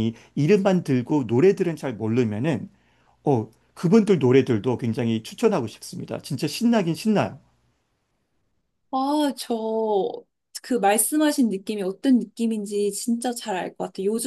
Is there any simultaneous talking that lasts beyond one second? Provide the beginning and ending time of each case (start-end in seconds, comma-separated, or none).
none